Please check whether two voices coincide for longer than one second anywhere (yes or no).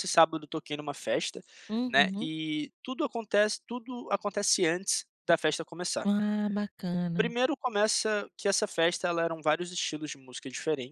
no